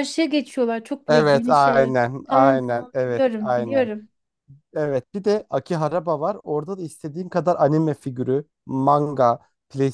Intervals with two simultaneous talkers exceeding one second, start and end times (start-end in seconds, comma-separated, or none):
1.1-3.9